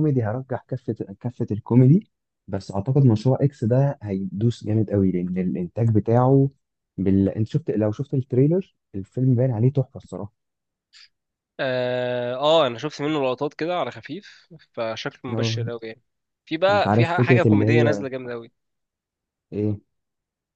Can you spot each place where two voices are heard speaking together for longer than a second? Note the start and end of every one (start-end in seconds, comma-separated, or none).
16.7-18.0